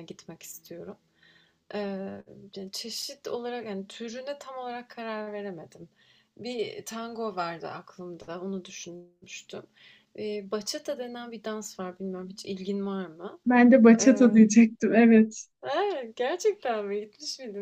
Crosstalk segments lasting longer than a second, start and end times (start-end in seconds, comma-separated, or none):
none